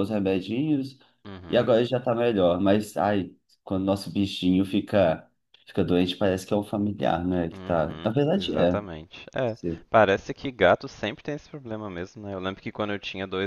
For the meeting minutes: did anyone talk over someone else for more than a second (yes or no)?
yes